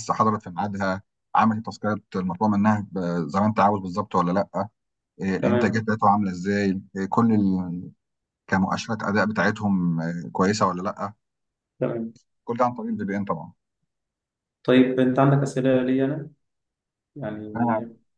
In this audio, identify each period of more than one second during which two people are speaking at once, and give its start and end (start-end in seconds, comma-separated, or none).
none